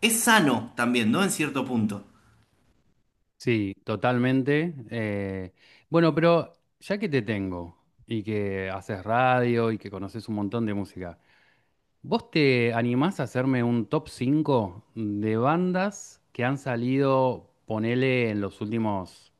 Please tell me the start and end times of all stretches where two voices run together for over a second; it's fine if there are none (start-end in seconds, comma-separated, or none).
none